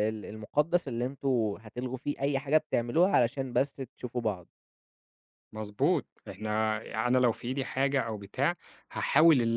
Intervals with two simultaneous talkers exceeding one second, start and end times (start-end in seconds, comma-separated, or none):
none